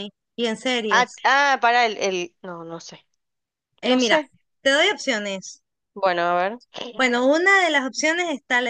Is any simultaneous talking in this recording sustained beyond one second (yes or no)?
no